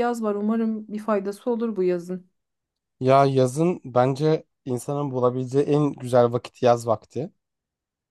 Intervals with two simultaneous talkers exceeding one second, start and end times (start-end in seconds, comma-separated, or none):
none